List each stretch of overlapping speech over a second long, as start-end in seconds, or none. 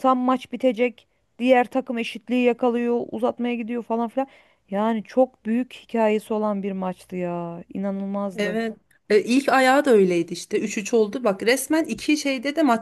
none